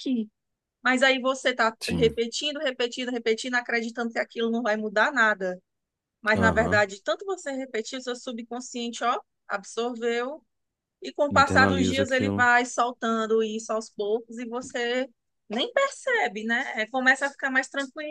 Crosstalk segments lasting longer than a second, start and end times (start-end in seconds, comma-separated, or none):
11.3-12.5